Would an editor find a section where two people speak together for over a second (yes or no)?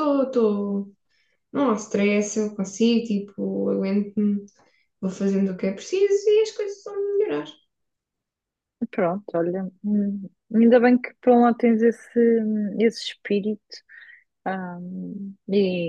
no